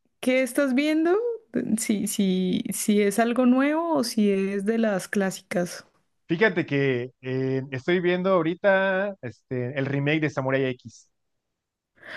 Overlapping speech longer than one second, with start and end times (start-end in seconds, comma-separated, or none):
none